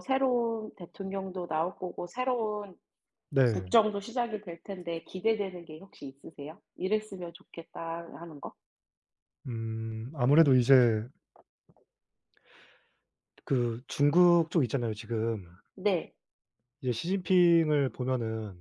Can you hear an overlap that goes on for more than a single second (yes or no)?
no